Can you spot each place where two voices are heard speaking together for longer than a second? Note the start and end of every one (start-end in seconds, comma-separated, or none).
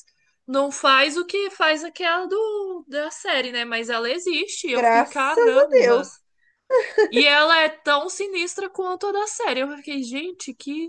4.7-6.1